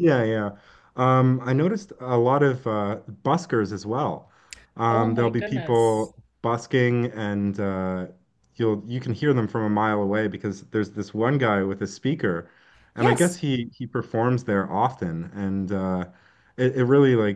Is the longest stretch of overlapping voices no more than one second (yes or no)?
no